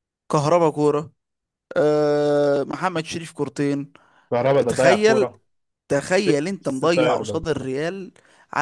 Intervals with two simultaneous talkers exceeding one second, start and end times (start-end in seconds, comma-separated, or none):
6.1-7.4